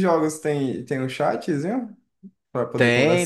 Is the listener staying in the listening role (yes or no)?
no